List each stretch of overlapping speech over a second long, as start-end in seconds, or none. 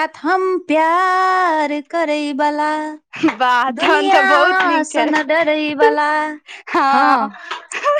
3.8-5.1